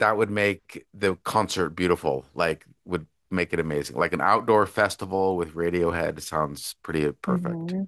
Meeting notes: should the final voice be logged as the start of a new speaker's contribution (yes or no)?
yes